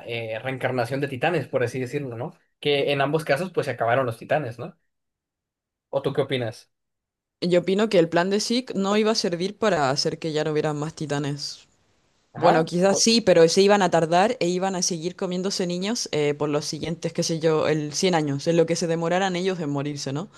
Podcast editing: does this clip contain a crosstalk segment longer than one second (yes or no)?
no